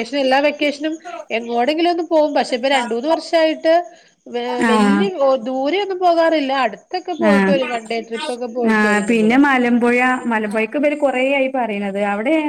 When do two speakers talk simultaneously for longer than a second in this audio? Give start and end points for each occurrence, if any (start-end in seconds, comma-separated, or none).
none